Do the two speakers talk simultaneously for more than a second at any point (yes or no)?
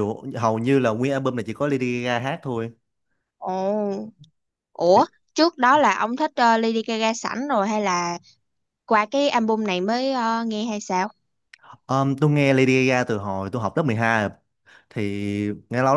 no